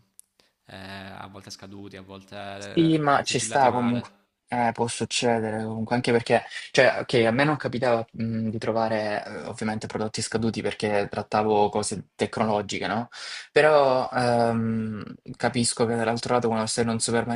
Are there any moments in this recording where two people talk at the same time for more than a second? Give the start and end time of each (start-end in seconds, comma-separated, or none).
2.6-4.1